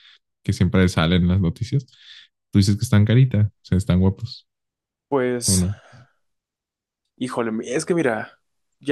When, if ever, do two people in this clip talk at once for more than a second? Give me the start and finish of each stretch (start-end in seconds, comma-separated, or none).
none